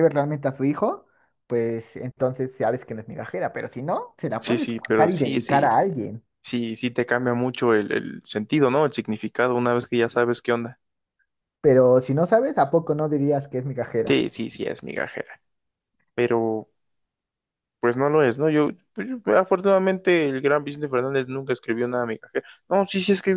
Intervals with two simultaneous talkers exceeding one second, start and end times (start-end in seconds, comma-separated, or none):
4.4-5.7